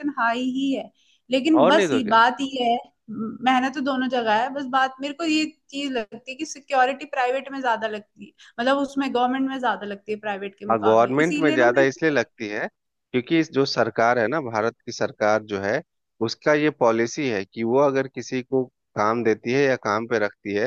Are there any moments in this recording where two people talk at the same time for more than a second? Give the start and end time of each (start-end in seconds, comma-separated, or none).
10.7-12.2